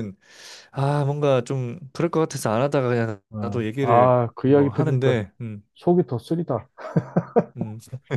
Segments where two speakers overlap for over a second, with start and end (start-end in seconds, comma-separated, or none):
3.3-5.2